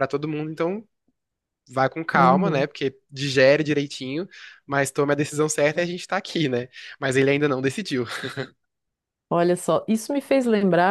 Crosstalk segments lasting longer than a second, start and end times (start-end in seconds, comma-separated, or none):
none